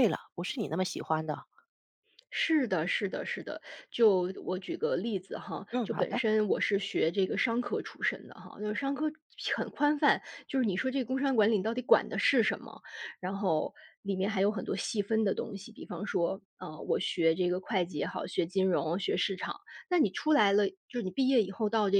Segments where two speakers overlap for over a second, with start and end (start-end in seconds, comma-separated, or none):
none